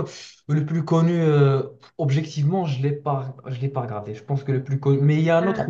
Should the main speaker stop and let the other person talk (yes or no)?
no